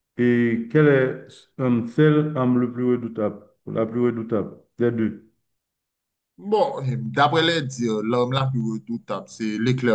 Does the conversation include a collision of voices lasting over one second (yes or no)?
no